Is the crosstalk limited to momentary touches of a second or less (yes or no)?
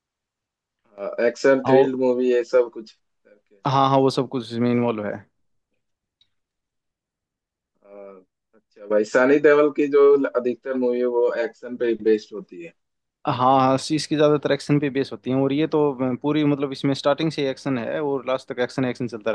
yes